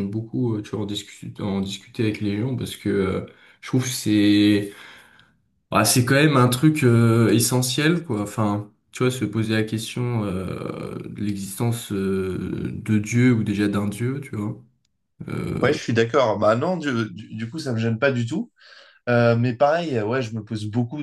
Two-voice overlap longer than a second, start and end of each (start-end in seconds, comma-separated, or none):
none